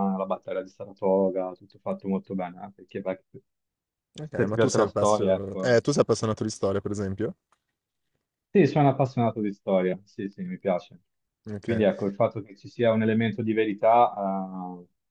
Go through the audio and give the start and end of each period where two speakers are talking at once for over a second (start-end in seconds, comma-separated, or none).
4.4-5.8